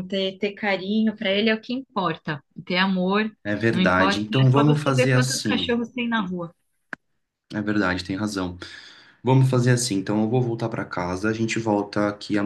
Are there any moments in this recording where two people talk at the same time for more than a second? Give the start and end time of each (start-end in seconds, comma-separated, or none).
3.7-5.8